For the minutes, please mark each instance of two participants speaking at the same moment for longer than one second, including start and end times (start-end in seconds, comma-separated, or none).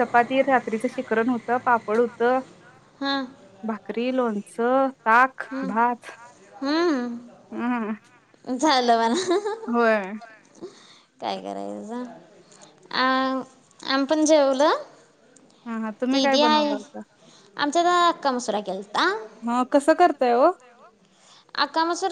none